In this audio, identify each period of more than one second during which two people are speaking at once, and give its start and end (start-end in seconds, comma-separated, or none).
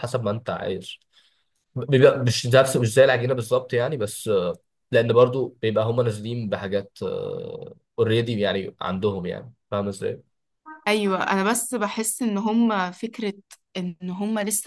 none